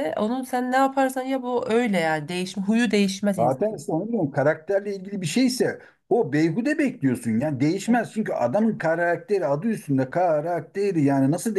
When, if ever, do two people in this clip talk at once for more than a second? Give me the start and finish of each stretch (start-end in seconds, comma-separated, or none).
none